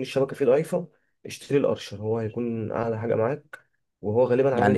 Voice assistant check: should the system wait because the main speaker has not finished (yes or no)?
no